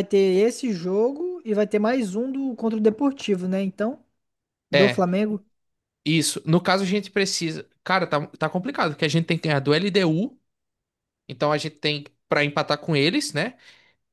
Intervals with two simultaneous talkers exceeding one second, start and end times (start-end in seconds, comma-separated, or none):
none